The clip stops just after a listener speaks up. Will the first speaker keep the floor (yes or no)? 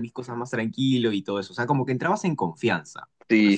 no